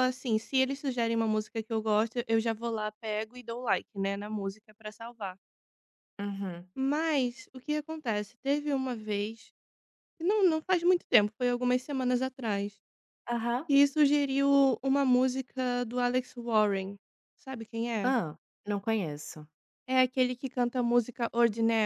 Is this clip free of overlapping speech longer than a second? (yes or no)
yes